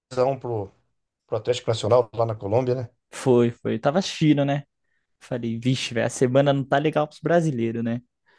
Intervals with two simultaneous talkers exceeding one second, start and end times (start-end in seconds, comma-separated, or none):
none